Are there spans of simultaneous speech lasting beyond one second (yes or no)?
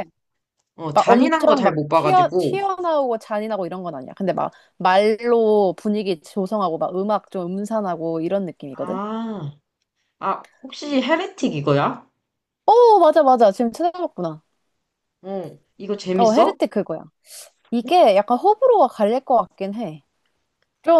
yes